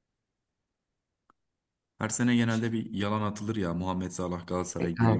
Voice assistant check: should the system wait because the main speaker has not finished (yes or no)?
no